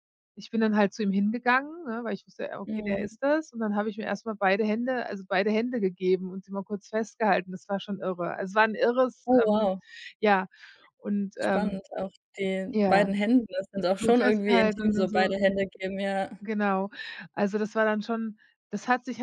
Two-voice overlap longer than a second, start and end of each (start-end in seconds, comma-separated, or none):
14.0-15.3